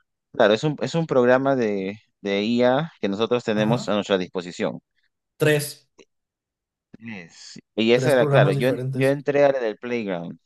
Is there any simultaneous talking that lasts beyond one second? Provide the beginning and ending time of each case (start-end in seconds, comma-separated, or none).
7.9-9.2